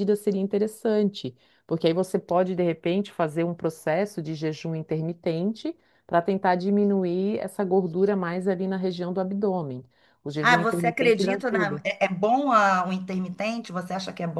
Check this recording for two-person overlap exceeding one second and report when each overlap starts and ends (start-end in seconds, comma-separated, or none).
10.4-11.8